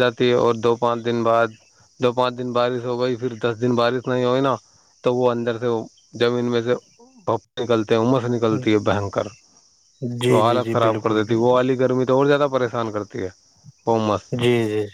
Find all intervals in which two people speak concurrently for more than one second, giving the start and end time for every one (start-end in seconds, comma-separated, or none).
10.3-11.7